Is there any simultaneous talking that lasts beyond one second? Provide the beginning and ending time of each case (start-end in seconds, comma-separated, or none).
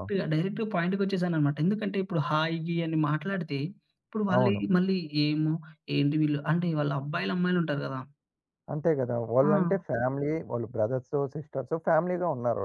none